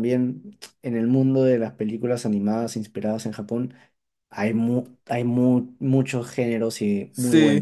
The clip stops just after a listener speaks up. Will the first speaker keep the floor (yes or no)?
no